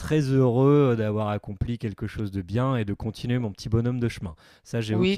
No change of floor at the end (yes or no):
no